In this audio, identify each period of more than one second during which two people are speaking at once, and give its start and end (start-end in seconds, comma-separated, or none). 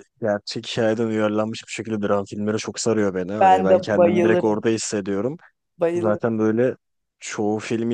3.4-4.6